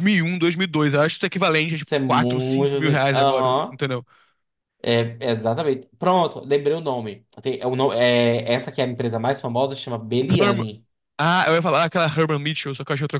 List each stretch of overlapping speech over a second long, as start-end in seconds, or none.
1.8-3.8